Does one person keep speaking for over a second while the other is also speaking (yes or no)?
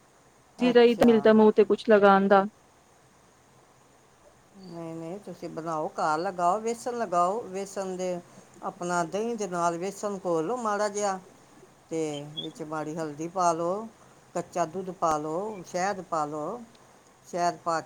no